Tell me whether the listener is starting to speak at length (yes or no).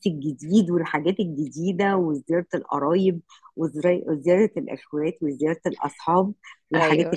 no